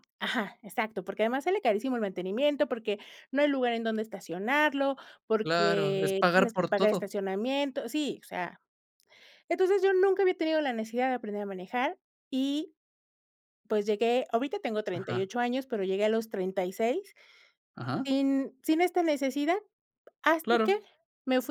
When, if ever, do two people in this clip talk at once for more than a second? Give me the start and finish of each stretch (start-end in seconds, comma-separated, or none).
5.4-7.1